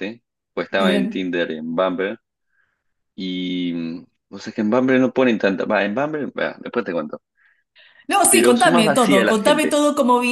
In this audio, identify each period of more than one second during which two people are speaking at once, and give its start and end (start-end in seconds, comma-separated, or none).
8.3-9.8